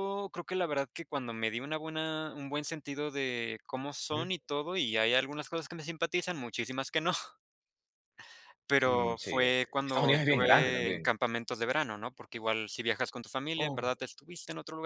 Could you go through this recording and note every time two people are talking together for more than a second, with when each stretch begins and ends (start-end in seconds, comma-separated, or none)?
8.8-11.1